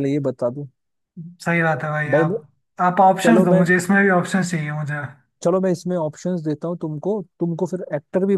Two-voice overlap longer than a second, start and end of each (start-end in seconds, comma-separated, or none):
none